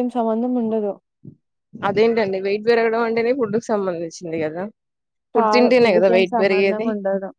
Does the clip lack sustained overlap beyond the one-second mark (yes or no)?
no